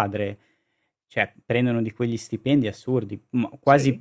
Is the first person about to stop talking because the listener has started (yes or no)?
no